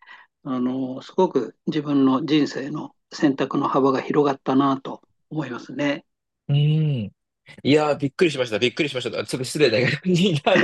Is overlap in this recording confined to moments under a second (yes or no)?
yes